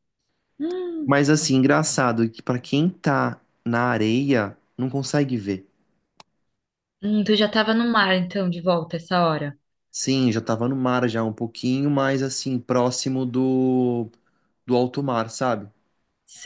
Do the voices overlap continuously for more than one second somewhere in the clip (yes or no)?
no